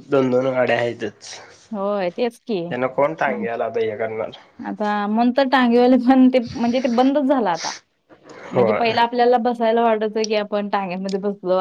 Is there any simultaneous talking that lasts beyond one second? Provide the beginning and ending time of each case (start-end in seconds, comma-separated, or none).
none